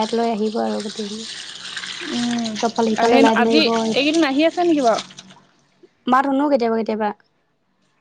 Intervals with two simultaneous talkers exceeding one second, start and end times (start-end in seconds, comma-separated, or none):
none